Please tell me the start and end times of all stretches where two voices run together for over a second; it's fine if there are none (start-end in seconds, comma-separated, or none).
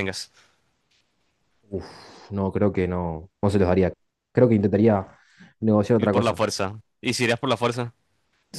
none